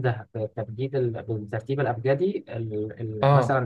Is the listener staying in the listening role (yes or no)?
no